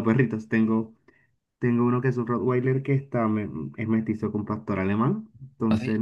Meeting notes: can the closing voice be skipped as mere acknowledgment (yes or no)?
yes